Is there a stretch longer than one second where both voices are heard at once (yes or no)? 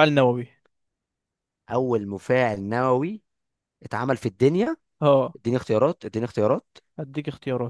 no